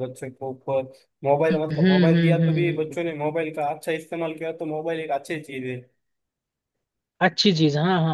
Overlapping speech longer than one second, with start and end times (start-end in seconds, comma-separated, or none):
1.5-3.0